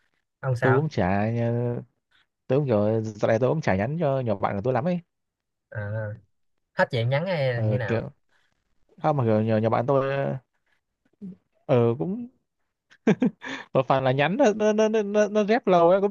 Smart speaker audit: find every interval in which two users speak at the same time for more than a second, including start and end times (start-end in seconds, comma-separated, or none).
none